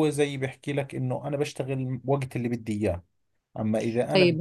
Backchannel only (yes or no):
yes